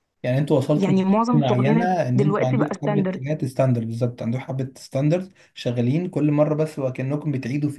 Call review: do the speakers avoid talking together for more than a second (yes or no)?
no